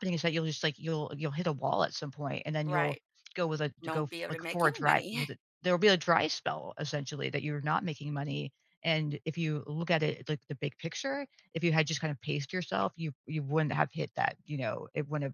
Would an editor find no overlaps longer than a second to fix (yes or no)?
no